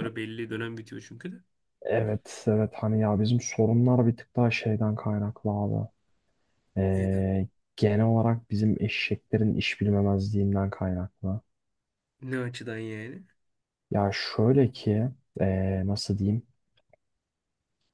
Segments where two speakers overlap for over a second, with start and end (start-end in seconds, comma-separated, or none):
none